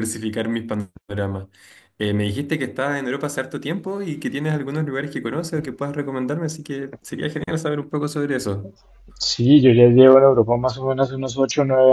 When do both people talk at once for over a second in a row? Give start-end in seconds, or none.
none